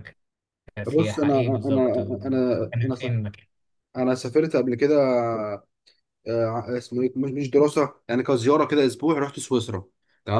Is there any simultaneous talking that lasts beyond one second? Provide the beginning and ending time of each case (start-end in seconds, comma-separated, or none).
0.9-3.2